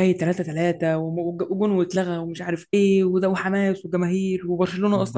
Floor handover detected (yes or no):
yes